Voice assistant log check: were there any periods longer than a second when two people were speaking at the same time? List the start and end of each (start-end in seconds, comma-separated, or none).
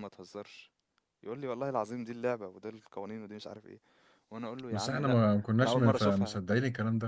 4.7-6.4